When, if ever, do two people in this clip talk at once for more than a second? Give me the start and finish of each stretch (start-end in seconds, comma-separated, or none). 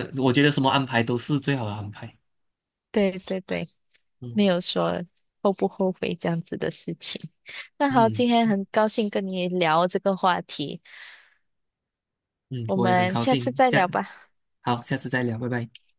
12.7-13.9